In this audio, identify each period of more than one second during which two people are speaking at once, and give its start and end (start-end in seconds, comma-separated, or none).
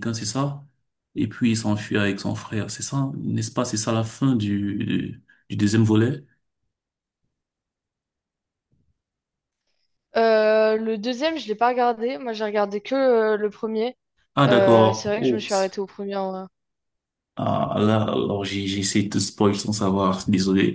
14.5-15.8